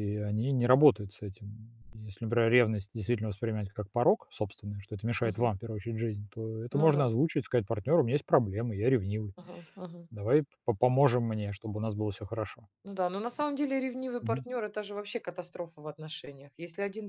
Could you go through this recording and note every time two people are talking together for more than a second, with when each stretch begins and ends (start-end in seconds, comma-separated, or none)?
none